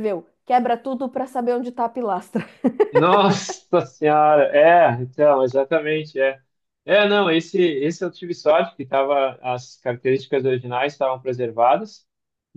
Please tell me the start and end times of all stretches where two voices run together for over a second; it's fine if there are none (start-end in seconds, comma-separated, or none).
none